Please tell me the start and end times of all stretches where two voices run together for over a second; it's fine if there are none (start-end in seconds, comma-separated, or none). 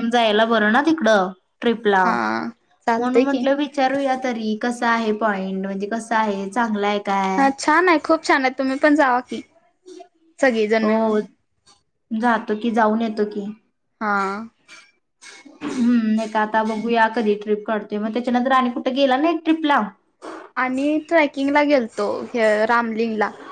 none